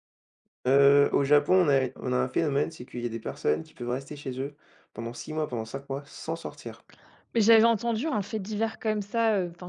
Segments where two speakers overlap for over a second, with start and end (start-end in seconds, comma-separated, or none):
none